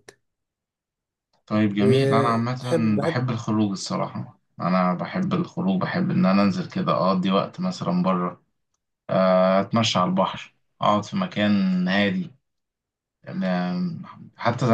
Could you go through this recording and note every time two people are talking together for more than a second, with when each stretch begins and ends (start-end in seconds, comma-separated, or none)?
1.8-3.2